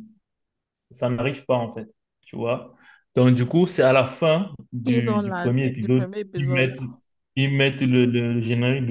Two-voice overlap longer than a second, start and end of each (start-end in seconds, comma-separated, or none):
4.8-6.8